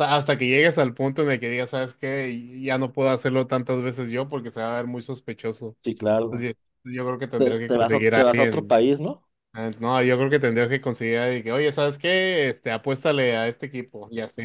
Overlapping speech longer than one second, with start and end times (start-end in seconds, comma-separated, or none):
7.4-8.8